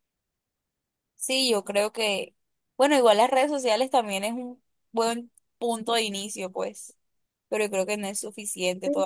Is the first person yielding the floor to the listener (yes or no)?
yes